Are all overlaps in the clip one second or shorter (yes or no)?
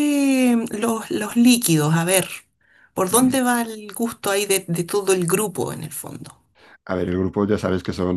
yes